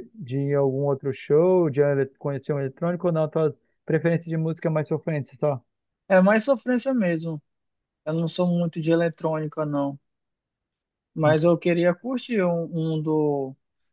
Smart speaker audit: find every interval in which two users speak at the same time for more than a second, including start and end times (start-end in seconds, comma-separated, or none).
none